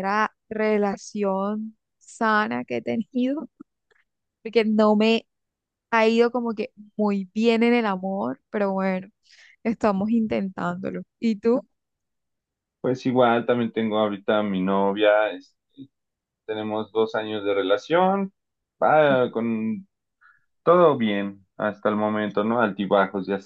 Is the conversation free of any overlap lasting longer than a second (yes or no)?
yes